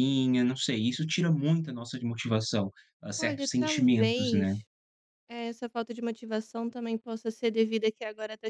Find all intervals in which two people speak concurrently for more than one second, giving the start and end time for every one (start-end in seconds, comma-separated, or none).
3.2-4.6